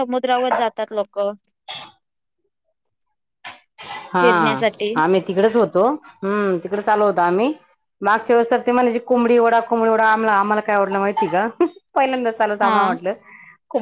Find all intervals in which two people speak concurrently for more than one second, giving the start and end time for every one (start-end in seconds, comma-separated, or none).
none